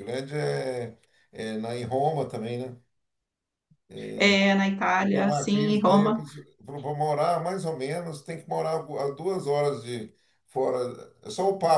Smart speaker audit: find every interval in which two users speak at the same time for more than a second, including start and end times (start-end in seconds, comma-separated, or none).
5.0-6.2